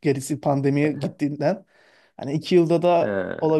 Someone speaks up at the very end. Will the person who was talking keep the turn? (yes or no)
yes